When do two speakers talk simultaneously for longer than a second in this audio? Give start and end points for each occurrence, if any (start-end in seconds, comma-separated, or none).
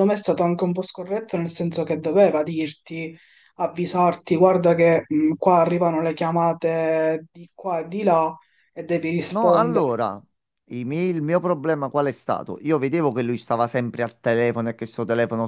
none